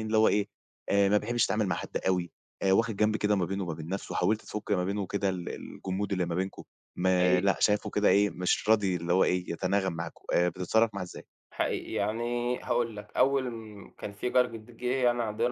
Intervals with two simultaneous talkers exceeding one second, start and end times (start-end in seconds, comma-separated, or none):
none